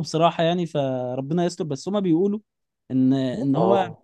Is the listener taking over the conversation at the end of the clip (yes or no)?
no